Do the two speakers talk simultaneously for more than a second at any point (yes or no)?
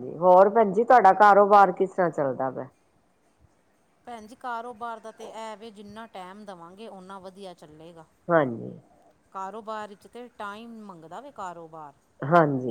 no